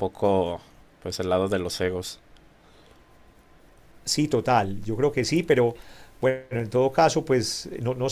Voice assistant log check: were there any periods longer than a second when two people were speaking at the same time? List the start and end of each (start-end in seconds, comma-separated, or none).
none